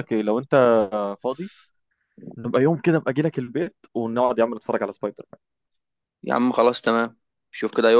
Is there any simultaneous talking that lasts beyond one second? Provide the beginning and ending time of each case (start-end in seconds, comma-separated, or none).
none